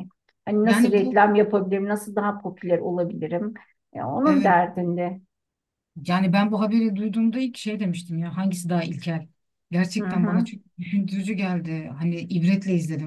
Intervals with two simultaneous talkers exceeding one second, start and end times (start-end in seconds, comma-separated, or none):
none